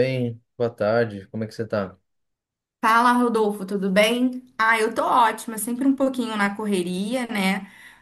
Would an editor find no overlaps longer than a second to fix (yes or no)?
yes